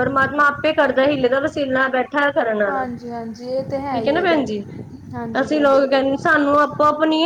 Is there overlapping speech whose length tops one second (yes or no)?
yes